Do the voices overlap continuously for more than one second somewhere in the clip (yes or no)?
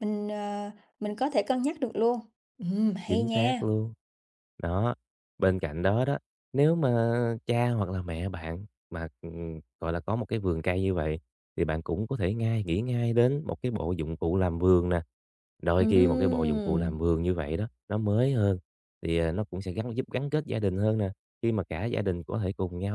yes